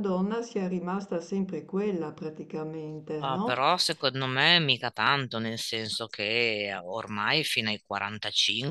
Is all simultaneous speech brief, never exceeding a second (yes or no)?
yes